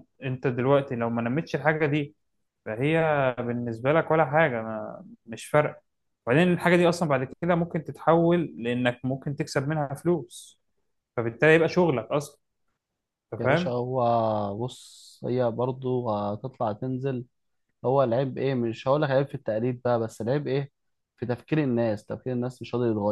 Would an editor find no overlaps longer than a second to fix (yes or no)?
yes